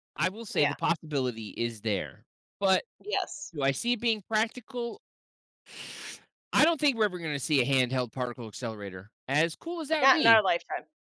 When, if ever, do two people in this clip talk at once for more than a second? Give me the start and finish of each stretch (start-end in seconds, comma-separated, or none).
none